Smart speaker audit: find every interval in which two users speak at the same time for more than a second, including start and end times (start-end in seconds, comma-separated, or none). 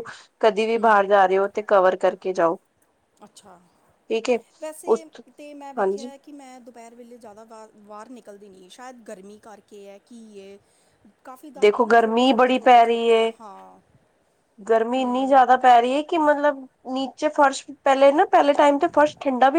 11.6-13.3